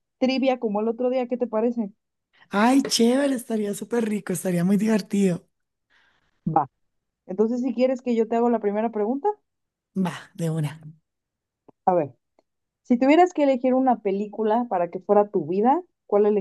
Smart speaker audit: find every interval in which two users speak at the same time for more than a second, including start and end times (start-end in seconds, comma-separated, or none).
none